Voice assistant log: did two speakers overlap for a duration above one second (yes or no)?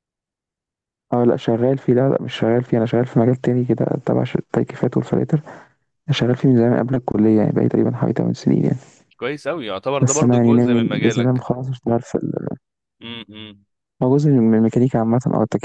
yes